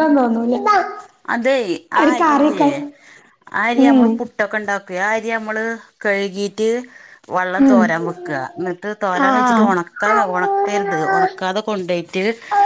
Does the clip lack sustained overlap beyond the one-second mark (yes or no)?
yes